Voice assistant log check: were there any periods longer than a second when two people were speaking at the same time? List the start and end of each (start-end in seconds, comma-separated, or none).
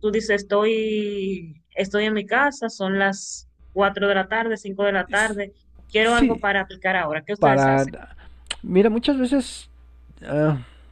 none